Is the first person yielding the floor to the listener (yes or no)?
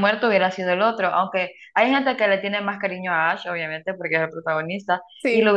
no